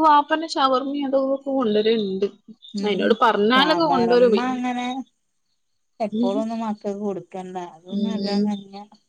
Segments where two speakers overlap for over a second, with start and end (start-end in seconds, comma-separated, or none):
none